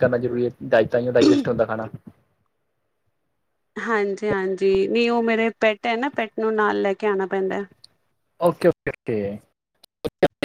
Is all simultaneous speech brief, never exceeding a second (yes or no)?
yes